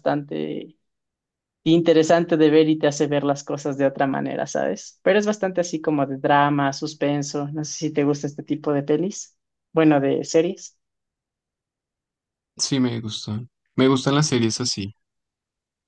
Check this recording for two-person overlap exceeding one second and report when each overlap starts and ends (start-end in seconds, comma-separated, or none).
none